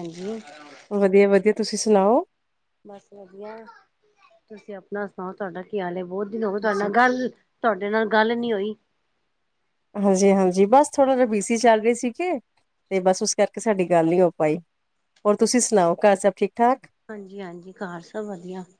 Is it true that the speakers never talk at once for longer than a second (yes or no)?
yes